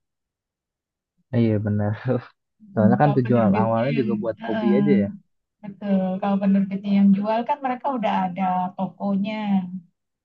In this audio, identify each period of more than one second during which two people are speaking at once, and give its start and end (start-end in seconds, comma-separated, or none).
2.7-4.8